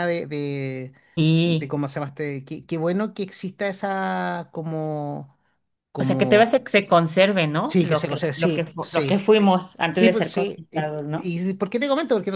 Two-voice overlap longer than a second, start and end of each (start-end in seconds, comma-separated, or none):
7.6-9.2, 9.9-11.3